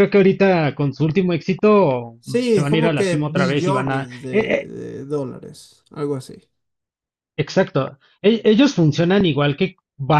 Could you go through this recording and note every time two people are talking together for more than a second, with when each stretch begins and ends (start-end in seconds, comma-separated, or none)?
2.5-4.7